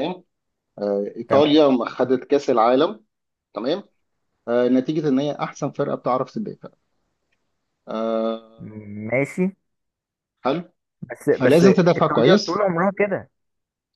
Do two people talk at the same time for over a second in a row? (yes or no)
yes